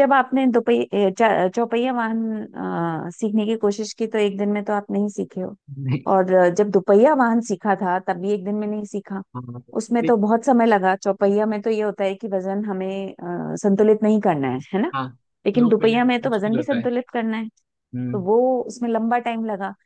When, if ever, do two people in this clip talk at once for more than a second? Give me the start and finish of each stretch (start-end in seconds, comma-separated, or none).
15.6-16.9